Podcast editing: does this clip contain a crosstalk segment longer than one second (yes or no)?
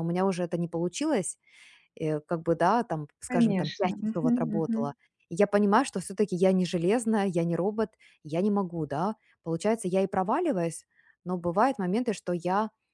yes